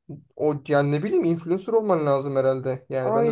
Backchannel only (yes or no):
no